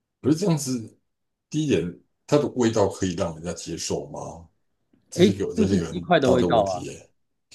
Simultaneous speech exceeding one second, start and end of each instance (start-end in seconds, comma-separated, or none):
5.2-6.9